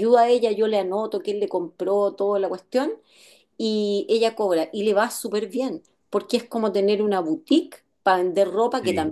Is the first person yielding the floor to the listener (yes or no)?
no